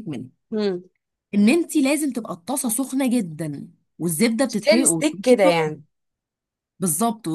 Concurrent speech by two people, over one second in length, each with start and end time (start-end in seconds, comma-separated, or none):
4.5-5.8